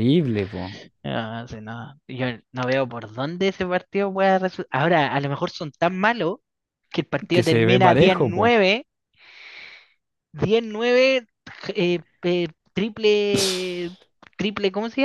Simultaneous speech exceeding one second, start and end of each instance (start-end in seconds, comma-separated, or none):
7.3-8.5